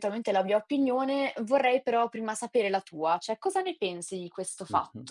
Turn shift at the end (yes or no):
yes